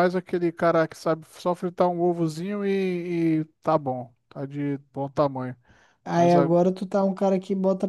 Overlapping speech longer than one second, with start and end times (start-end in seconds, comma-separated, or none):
none